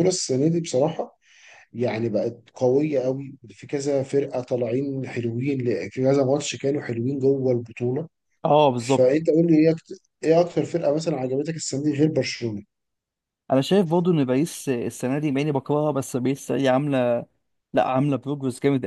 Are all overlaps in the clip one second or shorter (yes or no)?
yes